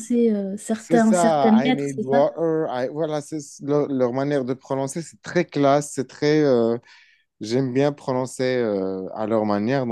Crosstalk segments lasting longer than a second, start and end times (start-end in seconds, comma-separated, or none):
0.8-2.2